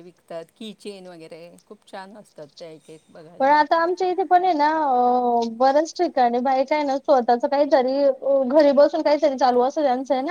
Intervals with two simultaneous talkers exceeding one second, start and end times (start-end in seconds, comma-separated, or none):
none